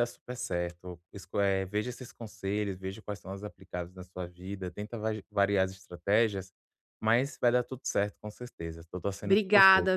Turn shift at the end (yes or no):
yes